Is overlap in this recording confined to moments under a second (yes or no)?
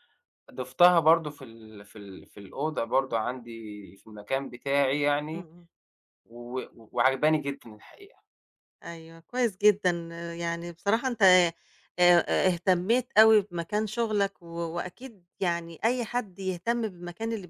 yes